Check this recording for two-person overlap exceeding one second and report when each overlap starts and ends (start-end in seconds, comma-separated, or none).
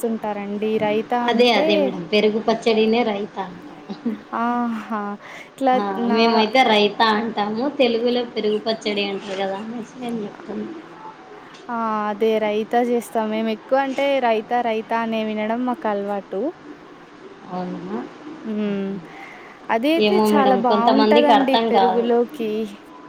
20.1-22.1